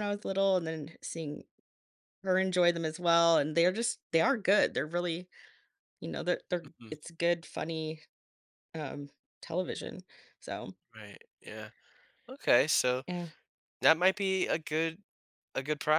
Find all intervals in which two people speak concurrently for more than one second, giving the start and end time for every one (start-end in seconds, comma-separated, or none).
none